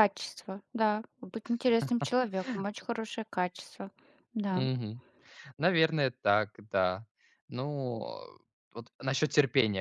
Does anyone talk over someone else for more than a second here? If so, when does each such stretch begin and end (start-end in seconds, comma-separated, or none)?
none